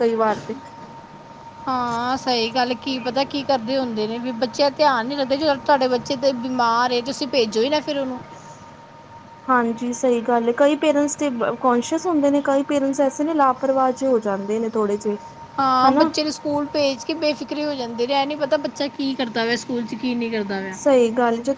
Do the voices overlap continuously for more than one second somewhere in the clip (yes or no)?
no